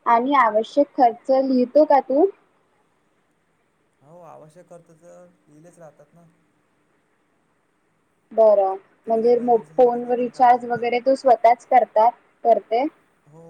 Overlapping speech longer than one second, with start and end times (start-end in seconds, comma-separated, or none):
9.0-10.9